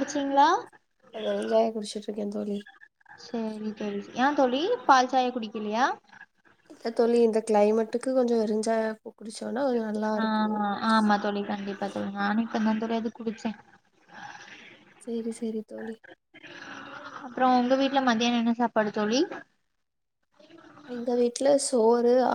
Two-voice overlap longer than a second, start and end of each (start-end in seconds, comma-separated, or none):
none